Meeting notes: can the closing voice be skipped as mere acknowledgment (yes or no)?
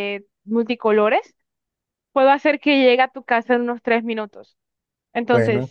no